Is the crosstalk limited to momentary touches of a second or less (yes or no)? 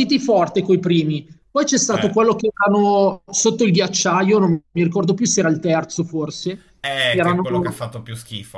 yes